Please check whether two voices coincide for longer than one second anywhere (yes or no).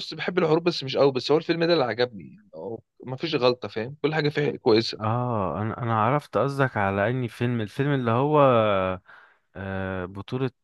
no